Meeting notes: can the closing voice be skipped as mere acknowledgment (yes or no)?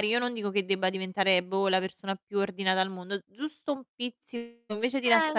yes